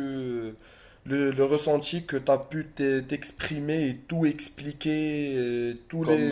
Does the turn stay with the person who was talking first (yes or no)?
yes